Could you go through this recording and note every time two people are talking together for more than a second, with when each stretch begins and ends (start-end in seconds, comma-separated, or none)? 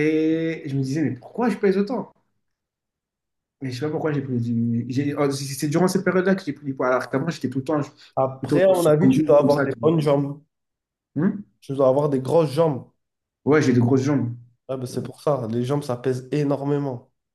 8.4-9.9